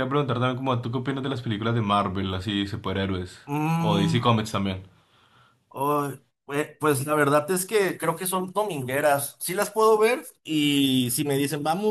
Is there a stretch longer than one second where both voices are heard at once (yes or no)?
no